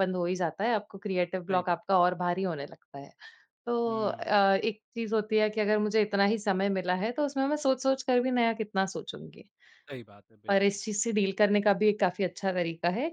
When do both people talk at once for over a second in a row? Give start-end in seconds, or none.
none